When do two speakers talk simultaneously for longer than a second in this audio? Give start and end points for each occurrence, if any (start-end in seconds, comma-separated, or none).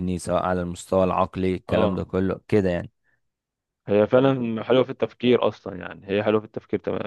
none